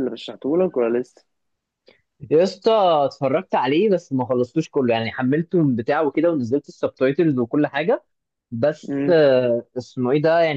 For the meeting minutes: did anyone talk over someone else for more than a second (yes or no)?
no